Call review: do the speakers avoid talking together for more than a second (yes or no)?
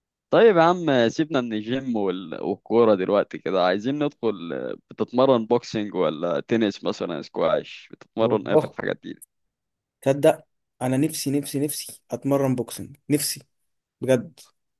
yes